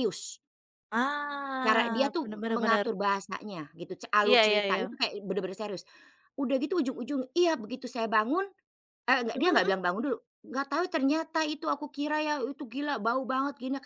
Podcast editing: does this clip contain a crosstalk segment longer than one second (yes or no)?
yes